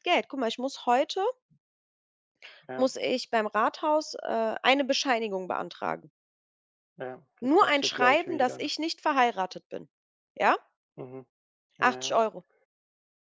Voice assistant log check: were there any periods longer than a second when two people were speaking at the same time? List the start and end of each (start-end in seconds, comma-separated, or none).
7.4-8.7